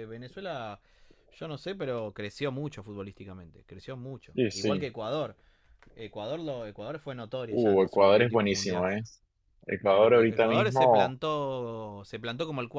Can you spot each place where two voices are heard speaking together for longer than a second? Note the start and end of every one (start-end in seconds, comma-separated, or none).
7.5-8.9, 9.9-11.1